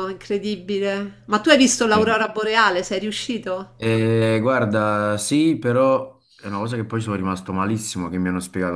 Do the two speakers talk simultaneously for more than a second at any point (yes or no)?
no